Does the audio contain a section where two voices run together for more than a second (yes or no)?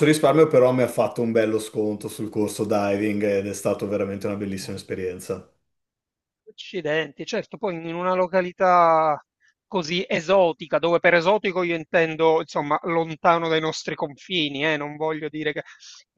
no